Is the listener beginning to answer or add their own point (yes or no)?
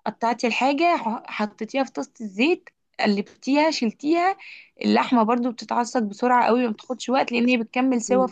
yes